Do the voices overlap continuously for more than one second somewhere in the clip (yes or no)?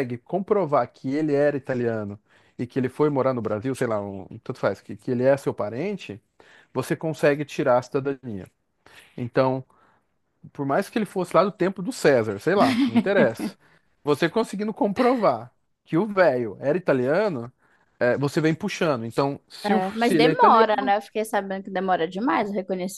yes